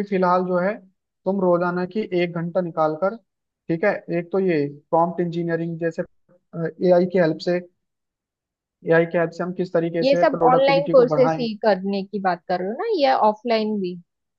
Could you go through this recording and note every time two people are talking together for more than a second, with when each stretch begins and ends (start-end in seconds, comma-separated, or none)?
10.0-11.5